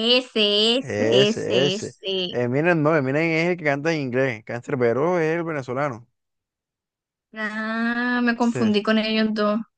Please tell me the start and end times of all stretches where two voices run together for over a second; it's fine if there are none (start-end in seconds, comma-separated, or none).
0.8-2.4